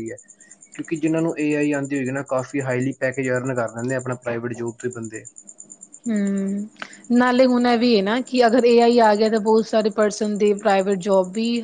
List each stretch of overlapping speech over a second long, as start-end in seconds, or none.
none